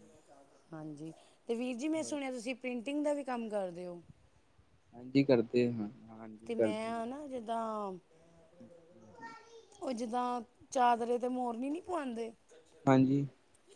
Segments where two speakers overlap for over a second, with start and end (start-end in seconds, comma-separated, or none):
none